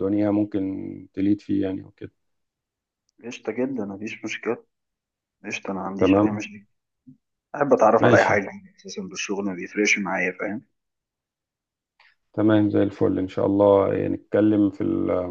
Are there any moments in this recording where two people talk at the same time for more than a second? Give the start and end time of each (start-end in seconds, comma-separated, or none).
none